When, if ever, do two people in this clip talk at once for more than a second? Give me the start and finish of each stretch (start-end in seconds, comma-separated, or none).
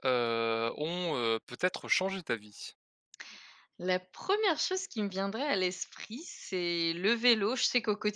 none